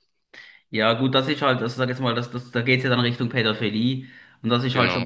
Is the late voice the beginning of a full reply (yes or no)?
no